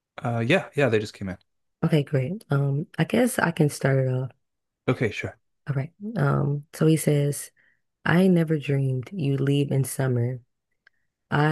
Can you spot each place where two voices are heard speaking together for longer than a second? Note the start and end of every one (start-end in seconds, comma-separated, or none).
none